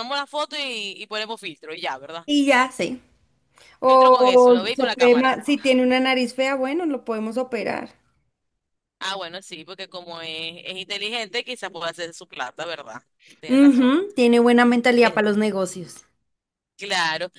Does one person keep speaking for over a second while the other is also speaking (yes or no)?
yes